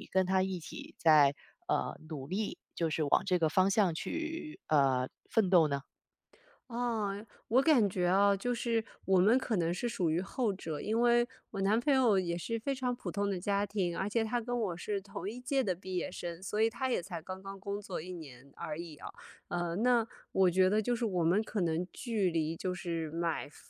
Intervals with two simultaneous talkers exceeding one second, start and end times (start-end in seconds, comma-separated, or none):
none